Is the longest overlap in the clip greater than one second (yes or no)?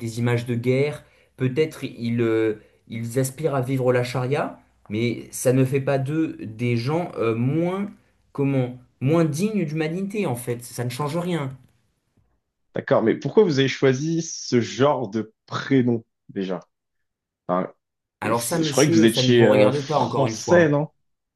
yes